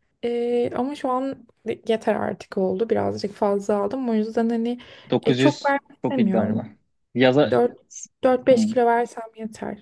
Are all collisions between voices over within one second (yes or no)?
no